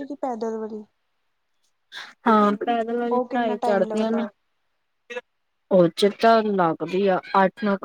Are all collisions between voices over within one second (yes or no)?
no